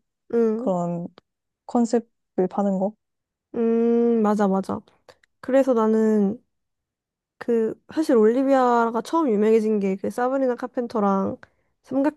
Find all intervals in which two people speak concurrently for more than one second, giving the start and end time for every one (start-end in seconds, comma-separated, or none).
none